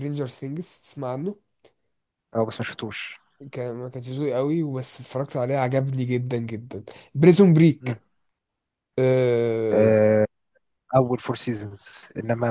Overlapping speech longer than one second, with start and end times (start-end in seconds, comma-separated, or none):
none